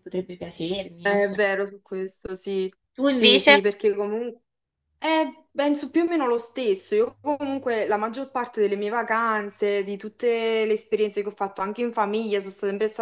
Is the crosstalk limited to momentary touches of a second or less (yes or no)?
yes